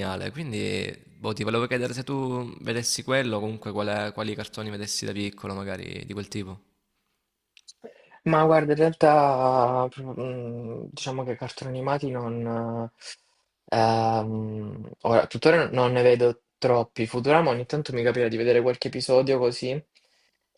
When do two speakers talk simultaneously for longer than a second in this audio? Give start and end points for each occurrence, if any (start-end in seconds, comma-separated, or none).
none